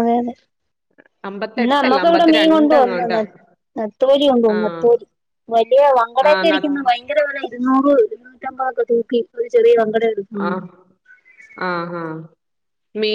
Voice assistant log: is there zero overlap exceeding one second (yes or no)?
no